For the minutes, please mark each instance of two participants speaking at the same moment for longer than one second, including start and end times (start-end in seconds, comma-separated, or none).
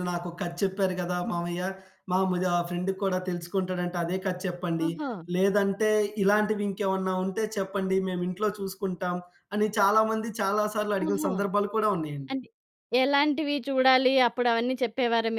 none